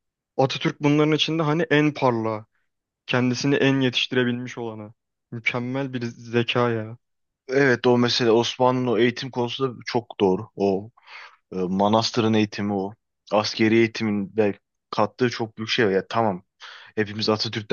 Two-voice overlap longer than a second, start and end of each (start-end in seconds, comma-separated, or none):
none